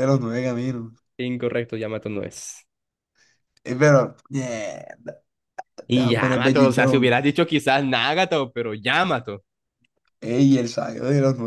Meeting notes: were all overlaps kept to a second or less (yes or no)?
no